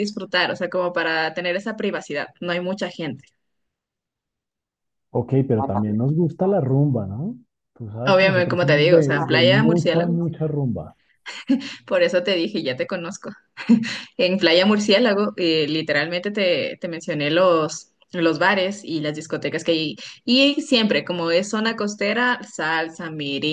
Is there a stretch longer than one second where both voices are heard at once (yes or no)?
yes